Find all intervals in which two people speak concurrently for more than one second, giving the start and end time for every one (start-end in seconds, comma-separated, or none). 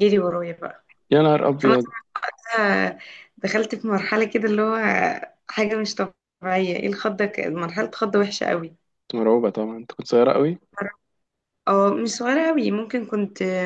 none